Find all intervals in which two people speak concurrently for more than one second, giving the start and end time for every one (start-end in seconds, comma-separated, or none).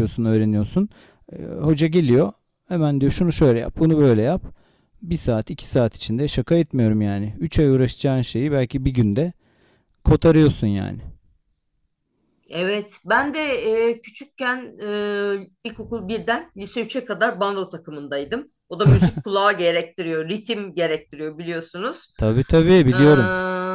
none